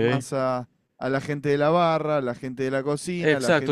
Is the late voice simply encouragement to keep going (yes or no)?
no